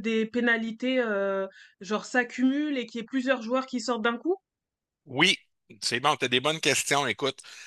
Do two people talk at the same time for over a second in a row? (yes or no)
no